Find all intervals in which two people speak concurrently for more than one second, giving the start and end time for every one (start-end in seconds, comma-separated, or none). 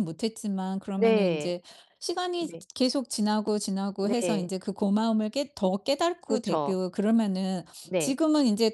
none